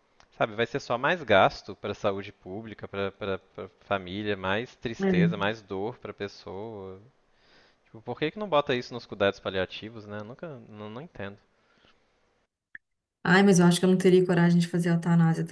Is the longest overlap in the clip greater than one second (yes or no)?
no